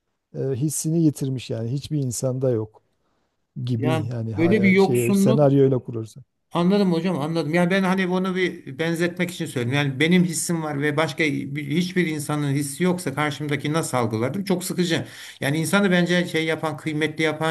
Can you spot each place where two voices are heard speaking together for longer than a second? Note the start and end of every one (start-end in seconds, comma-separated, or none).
3.8-5.5